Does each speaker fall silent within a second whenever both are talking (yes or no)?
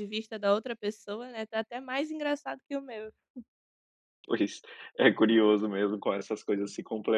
yes